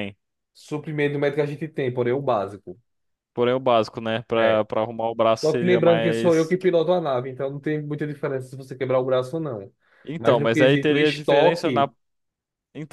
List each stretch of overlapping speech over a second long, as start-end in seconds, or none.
5.3-6.6, 10.2-11.9